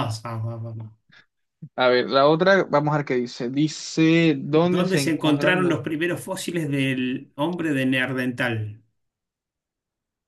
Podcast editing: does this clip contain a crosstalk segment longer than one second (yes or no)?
yes